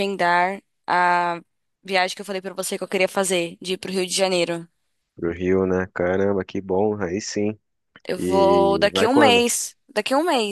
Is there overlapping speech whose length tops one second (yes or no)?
yes